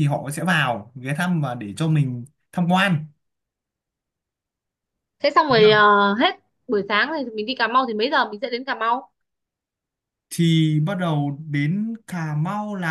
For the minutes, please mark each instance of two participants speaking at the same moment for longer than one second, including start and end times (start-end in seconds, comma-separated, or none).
none